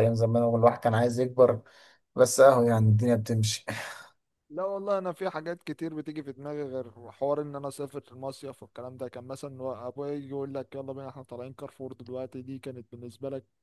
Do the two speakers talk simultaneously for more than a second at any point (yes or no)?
no